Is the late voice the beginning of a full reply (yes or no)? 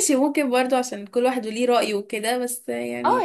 yes